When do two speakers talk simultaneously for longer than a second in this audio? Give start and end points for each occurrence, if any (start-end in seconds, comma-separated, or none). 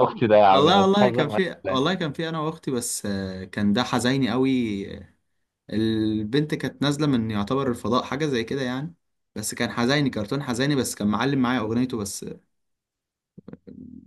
0.5-2.0